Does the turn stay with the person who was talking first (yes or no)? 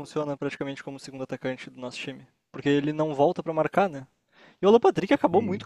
yes